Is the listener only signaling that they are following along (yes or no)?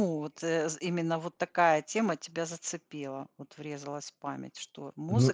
no